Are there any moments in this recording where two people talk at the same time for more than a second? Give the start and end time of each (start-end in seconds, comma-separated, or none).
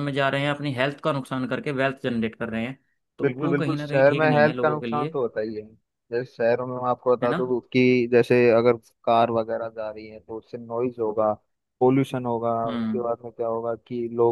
3.2-5.2